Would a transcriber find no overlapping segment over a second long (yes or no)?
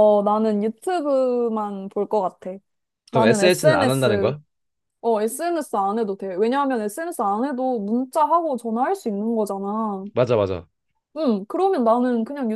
no